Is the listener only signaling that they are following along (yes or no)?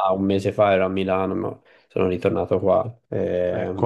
no